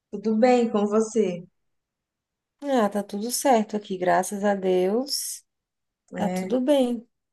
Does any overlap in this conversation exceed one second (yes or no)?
no